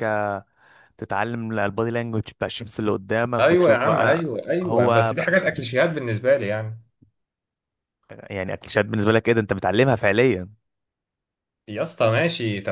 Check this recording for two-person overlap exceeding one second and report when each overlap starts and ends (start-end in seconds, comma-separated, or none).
3.4-5.1